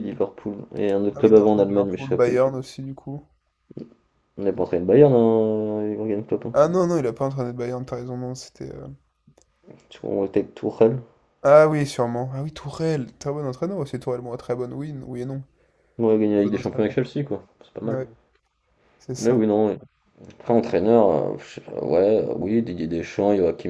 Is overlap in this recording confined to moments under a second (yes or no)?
no